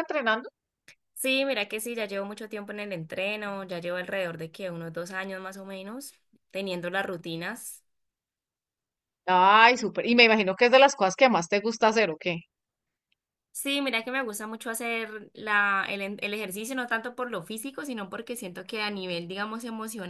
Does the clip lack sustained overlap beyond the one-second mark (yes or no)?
yes